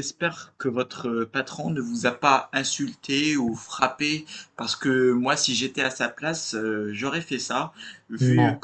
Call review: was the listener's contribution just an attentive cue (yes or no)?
yes